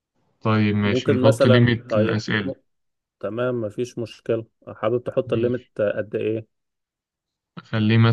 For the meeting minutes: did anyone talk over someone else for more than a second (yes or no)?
yes